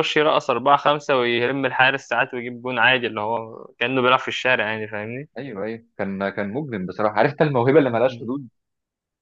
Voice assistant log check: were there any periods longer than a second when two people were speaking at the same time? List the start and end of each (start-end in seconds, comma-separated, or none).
none